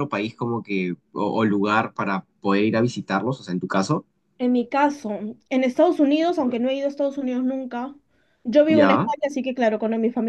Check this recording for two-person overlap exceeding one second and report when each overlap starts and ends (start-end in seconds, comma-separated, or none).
none